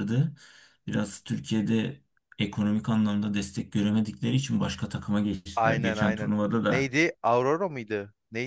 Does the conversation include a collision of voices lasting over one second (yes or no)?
yes